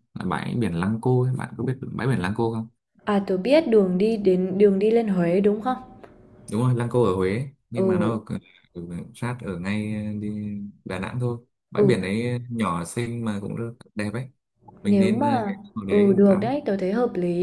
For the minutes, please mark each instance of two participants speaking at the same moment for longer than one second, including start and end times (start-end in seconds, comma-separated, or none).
14.8-16.6